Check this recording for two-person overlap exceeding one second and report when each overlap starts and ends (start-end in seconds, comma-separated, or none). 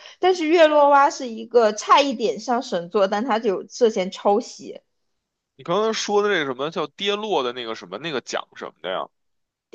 none